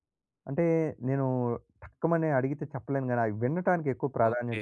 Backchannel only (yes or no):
no